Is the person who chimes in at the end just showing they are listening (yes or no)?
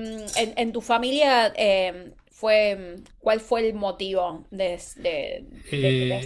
no